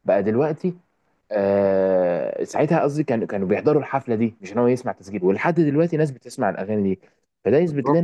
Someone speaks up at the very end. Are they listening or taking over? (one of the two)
taking over